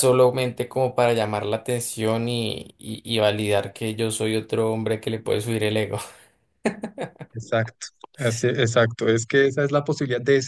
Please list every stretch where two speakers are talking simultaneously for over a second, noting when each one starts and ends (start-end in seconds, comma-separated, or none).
none